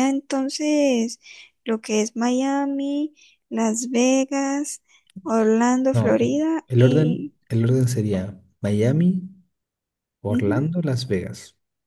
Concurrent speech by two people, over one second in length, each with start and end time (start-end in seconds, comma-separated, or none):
5.9-7.3